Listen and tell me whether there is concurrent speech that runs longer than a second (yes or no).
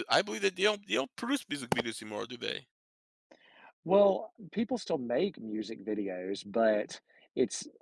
no